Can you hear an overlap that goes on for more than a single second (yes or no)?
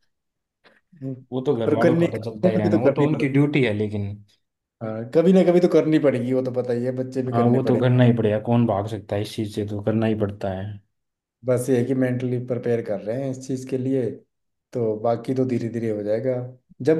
yes